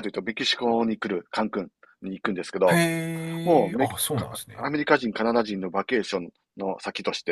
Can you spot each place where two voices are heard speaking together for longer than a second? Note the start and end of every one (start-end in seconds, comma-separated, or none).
3.4-4.7